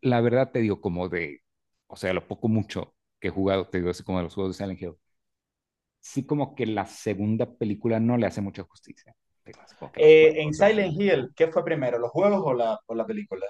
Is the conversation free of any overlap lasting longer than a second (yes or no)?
no